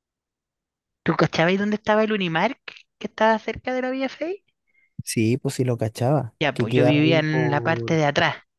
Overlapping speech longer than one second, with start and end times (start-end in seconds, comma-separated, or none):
6.4-8.0